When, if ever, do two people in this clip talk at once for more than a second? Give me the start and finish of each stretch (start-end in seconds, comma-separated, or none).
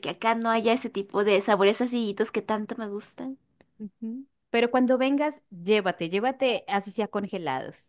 none